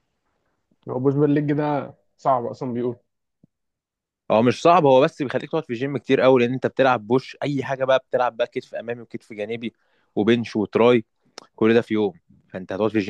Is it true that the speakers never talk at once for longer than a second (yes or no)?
yes